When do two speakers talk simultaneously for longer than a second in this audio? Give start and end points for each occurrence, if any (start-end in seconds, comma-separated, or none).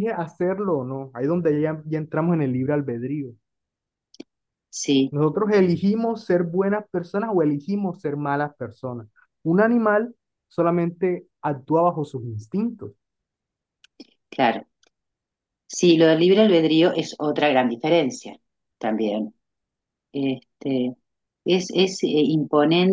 none